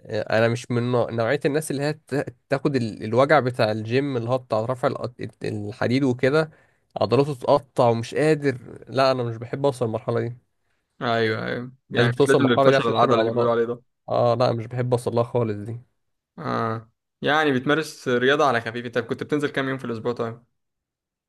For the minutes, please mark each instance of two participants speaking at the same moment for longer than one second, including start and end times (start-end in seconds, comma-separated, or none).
11.9-13.6